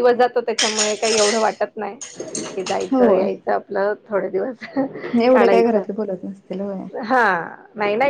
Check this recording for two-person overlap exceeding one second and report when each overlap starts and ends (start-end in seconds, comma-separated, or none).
none